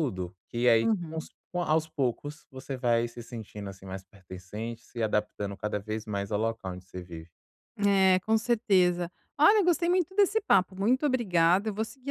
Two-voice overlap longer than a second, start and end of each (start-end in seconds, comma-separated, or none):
none